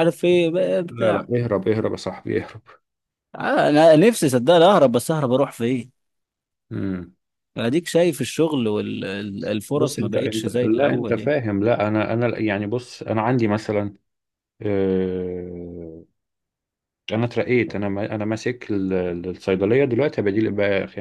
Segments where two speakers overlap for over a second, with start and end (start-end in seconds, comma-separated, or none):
9.7-11.3